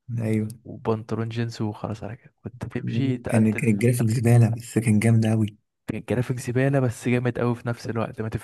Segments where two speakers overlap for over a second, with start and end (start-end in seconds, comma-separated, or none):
2.8-4.2